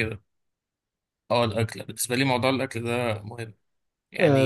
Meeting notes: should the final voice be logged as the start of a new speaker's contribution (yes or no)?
yes